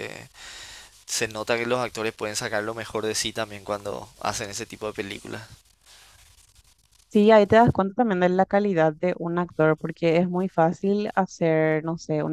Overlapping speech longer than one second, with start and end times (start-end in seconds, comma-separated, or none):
none